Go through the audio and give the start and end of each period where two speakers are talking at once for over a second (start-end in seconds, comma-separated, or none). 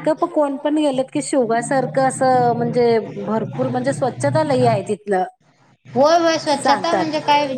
none